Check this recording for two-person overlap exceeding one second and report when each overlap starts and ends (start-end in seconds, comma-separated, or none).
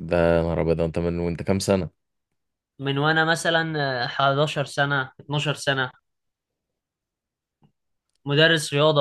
none